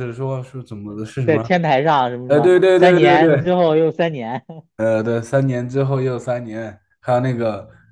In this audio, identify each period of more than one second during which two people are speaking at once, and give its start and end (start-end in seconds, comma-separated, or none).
2.3-3.5